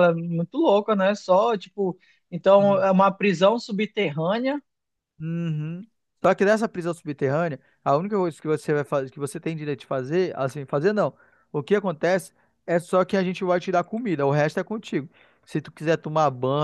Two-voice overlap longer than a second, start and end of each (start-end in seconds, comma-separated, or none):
none